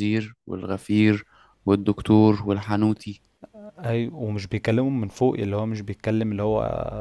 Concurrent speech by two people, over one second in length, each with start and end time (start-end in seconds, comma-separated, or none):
none